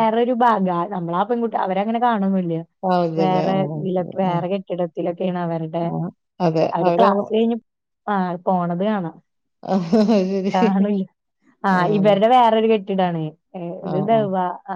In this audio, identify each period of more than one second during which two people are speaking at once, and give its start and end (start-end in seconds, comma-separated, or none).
none